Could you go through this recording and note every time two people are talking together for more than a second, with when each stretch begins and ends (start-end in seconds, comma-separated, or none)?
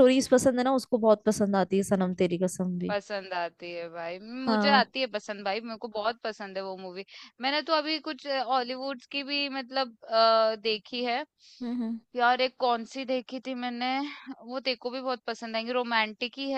none